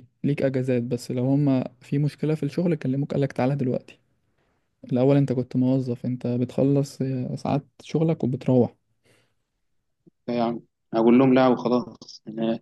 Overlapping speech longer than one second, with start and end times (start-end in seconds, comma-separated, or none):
none